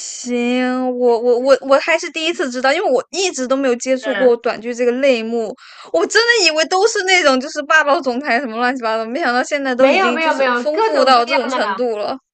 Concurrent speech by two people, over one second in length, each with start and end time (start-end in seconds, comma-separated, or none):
9.8-11.8